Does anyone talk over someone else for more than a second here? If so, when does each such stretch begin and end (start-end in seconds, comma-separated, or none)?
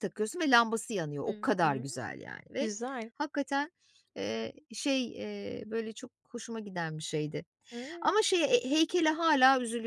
none